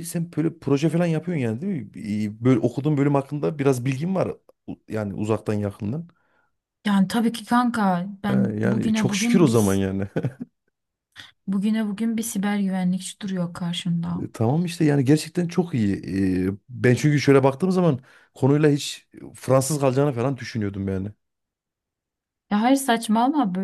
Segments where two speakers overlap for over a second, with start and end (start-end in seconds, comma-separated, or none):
8.3-9.8